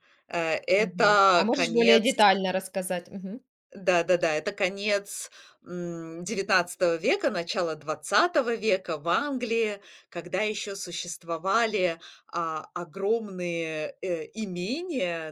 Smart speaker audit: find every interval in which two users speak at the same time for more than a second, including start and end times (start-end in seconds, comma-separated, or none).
0.8-2.1